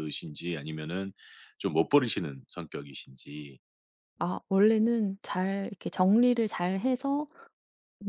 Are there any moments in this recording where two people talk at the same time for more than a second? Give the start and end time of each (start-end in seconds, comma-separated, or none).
none